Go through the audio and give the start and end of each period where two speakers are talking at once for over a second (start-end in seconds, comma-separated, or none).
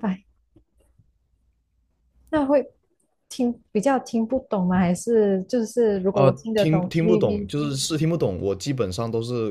6.1-7.5